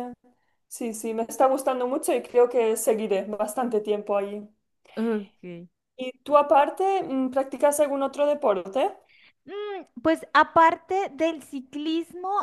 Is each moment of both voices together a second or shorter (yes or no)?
yes